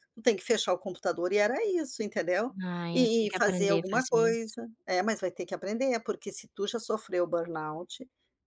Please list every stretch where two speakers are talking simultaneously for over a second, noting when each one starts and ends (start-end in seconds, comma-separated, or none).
2.9-4.5